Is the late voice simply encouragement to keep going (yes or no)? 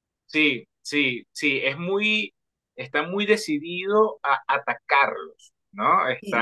no